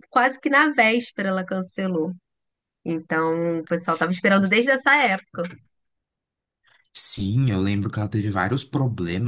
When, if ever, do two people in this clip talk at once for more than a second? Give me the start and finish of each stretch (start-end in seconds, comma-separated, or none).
none